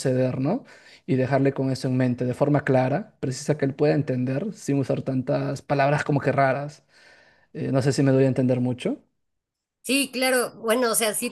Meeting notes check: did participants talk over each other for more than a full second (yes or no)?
no